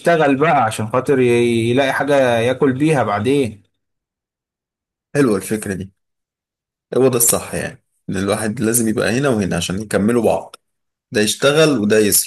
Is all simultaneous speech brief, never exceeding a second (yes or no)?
yes